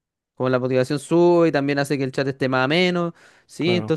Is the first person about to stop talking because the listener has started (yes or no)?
no